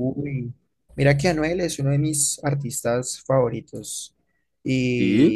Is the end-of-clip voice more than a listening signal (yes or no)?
no